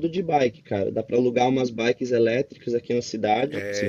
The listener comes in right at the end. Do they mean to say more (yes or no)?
yes